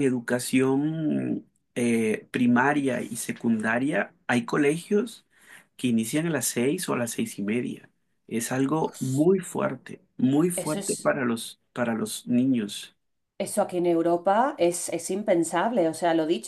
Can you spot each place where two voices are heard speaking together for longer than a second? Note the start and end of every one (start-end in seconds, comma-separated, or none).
none